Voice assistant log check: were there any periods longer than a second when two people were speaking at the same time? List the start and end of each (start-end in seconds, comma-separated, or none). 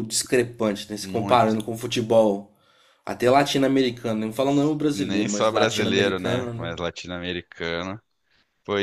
4.9-6.7